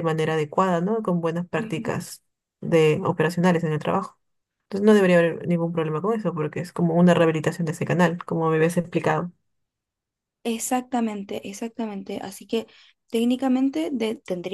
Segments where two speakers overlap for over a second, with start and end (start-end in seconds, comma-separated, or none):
none